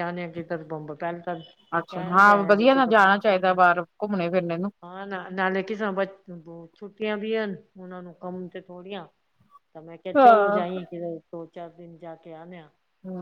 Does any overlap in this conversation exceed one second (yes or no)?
yes